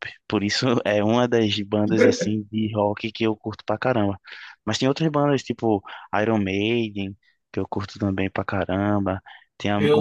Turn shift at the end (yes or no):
yes